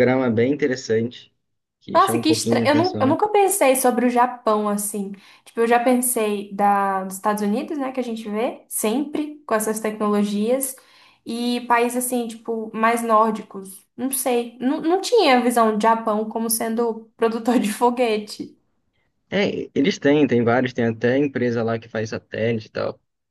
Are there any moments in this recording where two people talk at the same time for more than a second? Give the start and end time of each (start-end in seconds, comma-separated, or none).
1.9-3.2